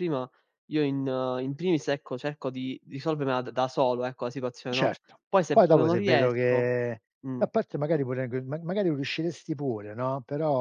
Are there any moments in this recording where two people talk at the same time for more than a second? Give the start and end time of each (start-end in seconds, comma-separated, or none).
4.7-6.7